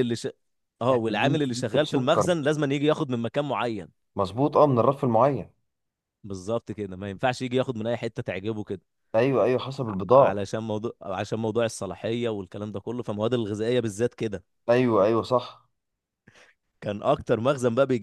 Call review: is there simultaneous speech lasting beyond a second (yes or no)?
yes